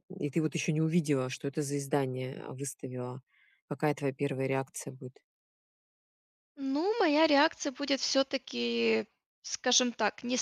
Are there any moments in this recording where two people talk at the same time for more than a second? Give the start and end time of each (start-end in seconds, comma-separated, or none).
none